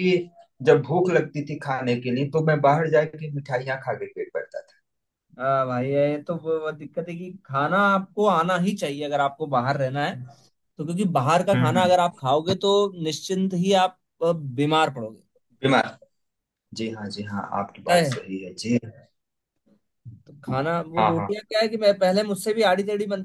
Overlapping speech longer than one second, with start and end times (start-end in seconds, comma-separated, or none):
none